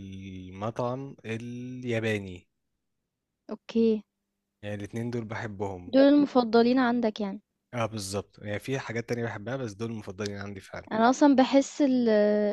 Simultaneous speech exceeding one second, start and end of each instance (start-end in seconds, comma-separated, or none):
none